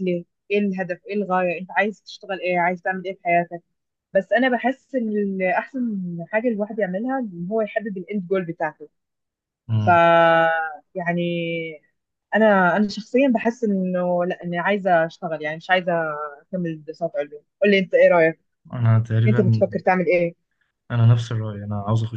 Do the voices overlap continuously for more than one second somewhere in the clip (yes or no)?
no